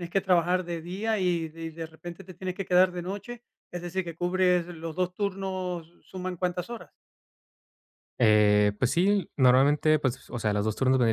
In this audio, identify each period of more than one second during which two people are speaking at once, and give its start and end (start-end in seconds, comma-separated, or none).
none